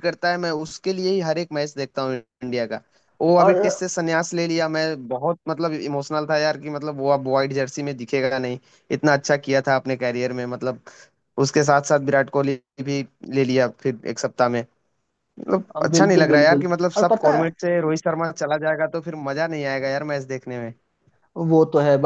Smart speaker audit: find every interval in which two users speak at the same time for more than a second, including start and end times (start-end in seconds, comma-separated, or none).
15.8-17.5